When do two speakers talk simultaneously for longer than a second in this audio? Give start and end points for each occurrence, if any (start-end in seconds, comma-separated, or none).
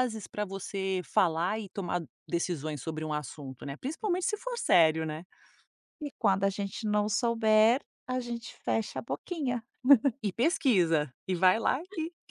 none